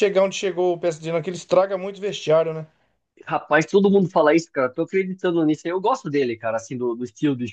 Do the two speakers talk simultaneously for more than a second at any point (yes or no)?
no